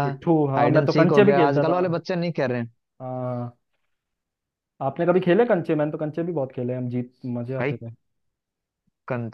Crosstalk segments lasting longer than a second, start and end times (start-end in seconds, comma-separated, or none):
0.6-1.8